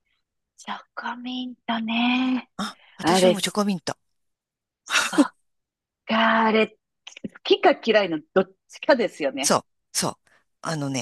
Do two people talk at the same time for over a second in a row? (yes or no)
no